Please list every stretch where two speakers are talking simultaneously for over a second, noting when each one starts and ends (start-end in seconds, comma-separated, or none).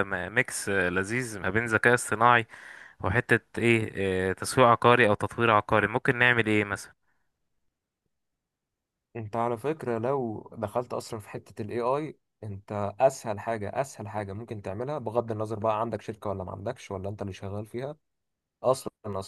none